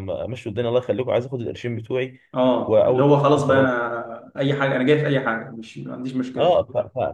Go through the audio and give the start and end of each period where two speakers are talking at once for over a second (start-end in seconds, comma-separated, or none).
2.5-3.9